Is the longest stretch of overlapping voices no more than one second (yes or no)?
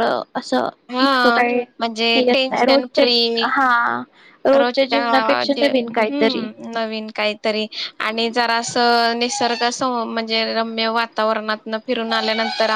no